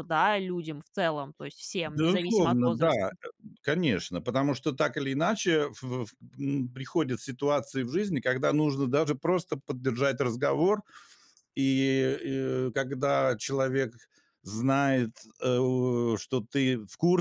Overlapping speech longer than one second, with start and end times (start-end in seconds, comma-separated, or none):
1.9-3.1